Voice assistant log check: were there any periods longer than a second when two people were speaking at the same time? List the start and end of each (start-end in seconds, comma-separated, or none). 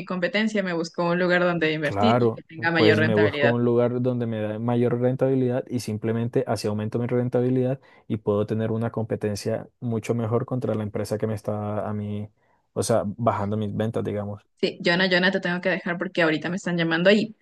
1.8-3.5